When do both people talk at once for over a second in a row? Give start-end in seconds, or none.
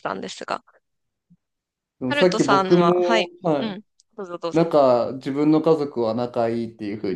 2.1-3.8